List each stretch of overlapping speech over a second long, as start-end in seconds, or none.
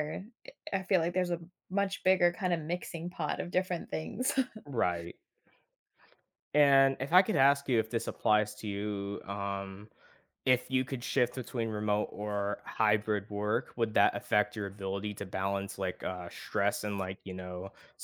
none